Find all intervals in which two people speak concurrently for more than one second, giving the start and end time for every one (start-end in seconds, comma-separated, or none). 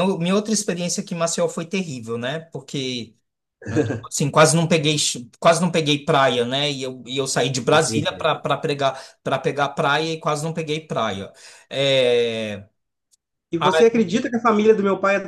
none